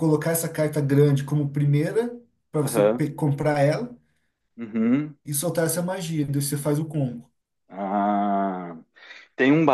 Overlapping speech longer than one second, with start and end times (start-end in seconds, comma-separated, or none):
none